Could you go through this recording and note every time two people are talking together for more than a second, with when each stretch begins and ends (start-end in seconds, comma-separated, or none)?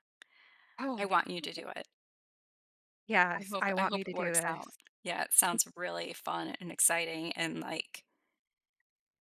3.4-4.8